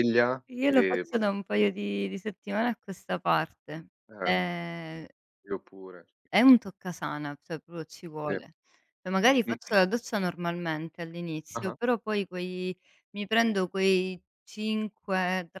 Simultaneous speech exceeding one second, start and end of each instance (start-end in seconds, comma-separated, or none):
none